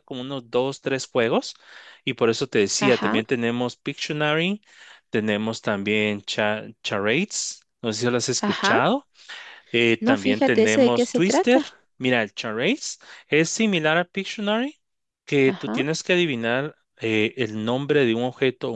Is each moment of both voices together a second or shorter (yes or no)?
no